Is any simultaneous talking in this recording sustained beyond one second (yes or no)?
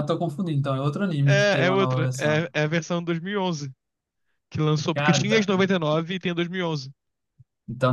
yes